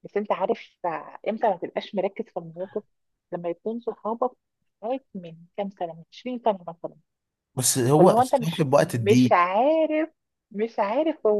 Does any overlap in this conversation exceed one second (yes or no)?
yes